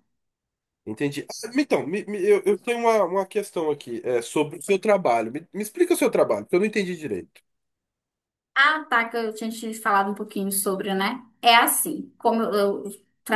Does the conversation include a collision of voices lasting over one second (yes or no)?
no